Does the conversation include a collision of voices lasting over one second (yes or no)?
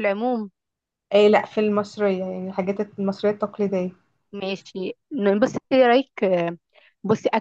no